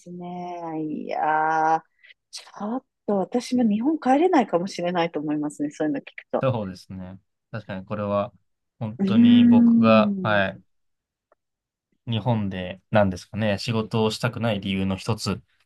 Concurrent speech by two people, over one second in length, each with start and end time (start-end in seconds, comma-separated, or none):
9.0-10.4